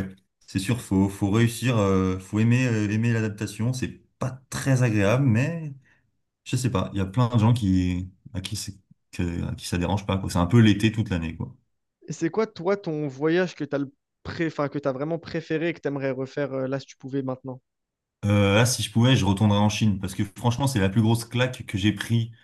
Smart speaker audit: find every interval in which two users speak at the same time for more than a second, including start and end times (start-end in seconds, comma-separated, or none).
none